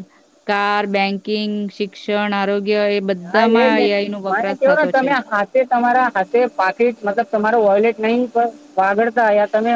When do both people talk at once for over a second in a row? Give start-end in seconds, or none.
3.3-5.1